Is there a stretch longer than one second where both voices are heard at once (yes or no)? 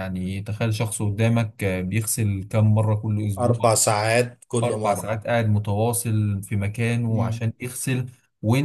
no